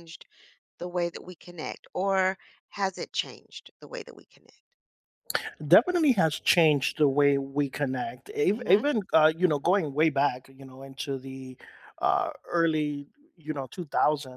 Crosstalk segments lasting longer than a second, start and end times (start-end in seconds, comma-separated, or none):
none